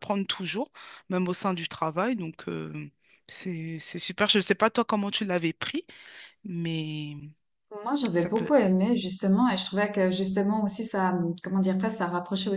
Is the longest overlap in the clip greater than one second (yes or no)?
no